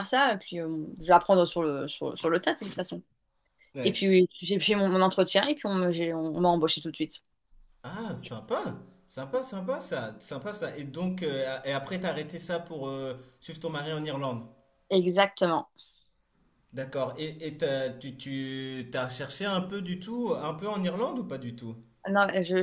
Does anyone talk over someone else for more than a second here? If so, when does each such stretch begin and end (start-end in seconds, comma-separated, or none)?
none